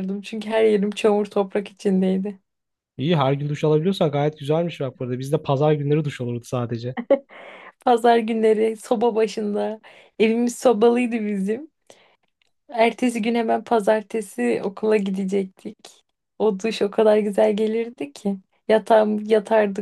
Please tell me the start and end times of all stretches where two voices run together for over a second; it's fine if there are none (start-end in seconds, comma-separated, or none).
none